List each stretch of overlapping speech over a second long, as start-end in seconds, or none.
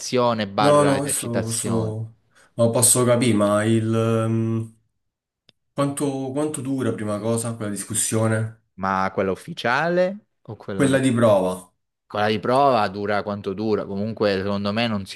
0.6-1.9